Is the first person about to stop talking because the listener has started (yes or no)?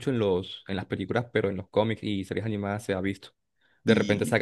no